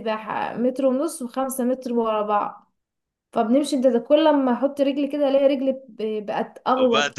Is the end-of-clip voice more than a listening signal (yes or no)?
yes